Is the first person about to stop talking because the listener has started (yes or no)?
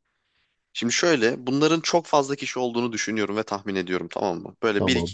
no